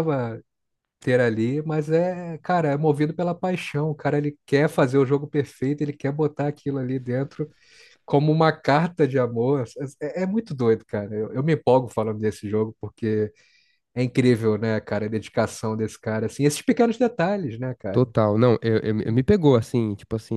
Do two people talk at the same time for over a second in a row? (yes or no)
no